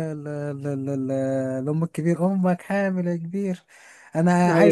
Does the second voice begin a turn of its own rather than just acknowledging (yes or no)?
no